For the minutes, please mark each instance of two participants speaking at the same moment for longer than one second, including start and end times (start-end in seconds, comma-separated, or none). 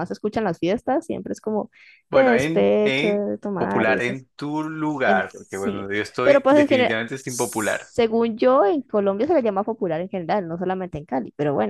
2.1-4.2, 5.0-7.9